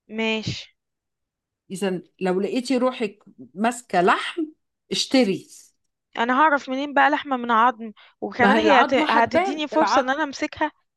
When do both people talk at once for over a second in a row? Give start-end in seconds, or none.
8.4-10.1